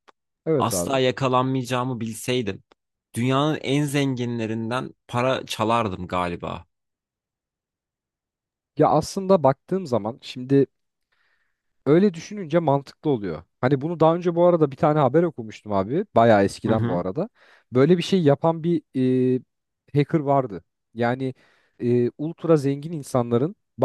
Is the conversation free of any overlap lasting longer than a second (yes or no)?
yes